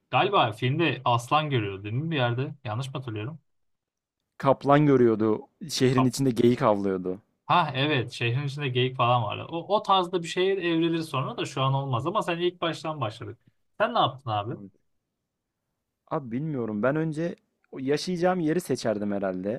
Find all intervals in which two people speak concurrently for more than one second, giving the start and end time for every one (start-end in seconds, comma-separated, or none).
none